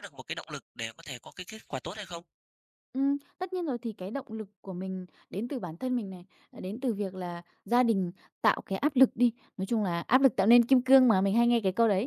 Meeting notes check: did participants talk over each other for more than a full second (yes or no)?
no